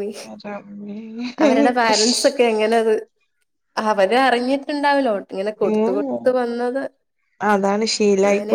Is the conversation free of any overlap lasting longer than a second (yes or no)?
yes